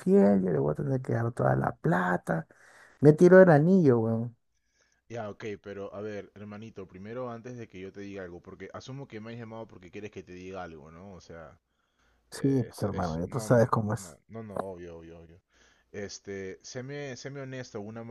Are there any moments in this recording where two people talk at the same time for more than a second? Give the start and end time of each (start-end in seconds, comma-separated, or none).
12.3-14.2